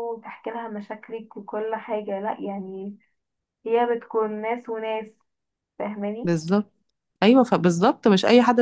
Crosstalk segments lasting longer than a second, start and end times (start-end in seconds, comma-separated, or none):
none